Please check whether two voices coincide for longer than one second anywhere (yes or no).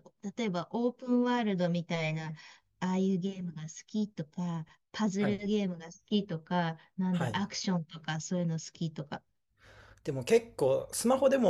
no